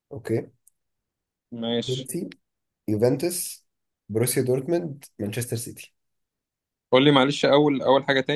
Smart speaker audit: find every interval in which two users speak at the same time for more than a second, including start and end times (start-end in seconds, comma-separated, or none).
none